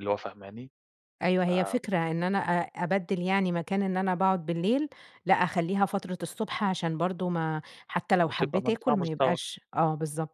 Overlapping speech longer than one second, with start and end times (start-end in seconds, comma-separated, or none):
8.2-9.5